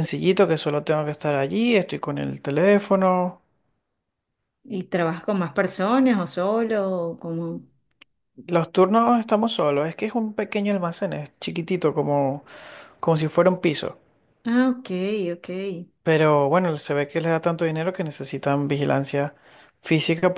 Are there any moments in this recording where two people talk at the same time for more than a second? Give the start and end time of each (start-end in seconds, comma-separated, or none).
none